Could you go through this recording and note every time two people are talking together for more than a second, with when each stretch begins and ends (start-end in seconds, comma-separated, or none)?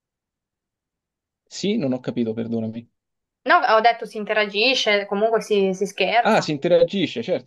none